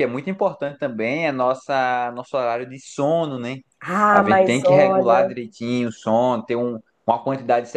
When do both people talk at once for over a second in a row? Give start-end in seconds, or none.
4.1-5.3